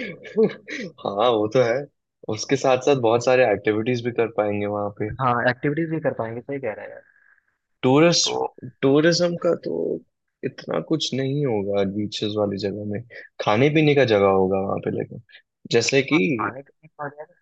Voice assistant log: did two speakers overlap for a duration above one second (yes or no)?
no